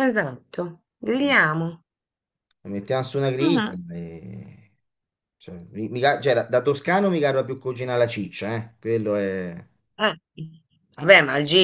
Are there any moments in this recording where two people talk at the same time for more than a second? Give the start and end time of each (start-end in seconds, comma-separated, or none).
none